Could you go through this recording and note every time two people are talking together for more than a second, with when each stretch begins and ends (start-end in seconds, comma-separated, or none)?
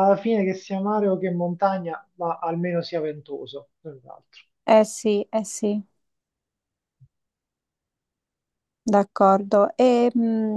none